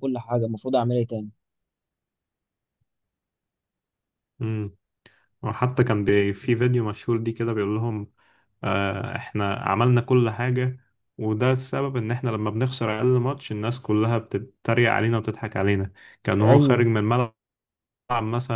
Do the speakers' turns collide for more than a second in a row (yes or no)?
no